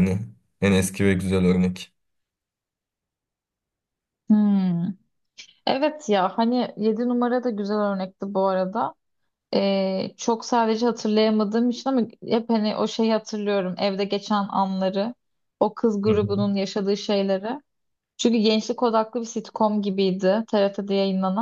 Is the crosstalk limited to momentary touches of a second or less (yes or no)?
yes